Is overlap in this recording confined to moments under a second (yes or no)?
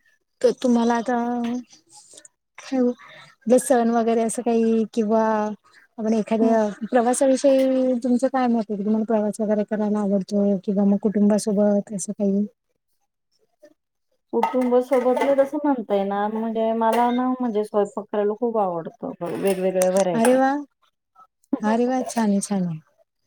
yes